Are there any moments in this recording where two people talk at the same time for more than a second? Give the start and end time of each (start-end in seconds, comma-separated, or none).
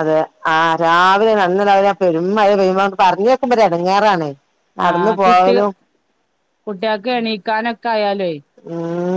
none